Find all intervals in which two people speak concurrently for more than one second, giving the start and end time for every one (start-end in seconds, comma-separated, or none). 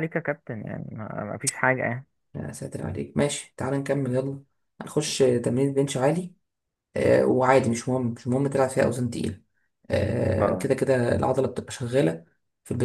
none